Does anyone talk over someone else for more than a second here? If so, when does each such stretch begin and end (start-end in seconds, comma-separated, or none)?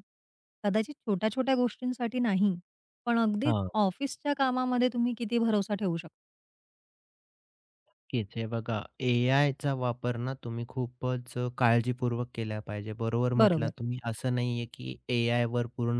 none